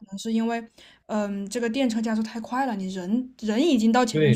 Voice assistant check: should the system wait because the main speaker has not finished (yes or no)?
no